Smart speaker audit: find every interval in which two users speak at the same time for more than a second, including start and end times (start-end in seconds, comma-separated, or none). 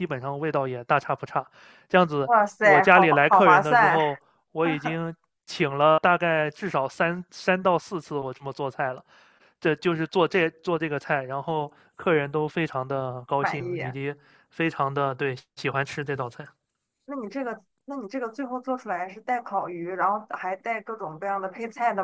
2.2-4.0